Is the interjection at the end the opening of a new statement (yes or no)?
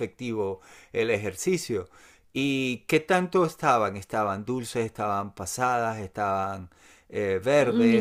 yes